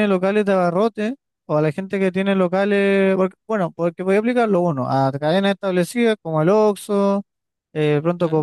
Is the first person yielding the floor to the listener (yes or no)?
no